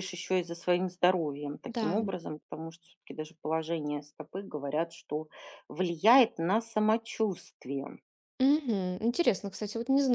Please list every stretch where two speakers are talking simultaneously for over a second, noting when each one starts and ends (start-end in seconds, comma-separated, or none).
none